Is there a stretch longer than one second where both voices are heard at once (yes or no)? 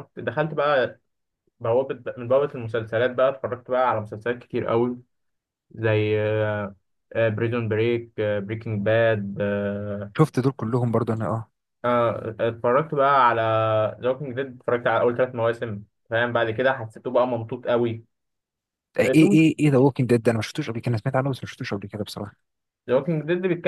no